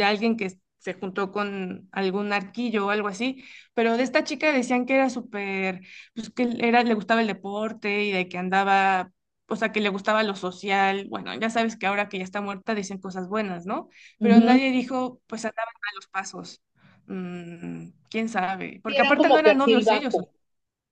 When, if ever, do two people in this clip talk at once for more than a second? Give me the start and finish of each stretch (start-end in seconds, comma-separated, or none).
18.9-20.2